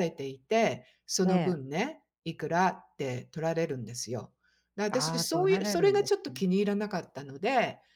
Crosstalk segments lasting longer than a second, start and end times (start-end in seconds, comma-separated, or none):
4.9-6.4